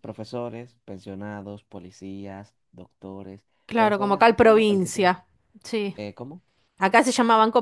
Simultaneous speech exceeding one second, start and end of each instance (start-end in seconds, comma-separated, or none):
3.6-5.1